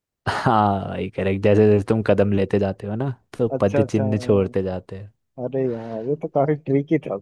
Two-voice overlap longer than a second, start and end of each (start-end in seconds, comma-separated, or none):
3.5-4.8